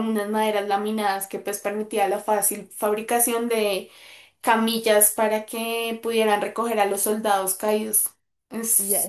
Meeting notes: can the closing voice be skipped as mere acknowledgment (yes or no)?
no